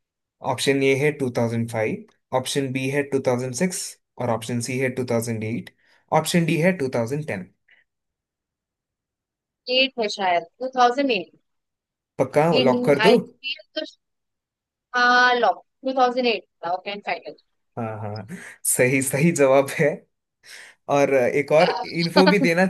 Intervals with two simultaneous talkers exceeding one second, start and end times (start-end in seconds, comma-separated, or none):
none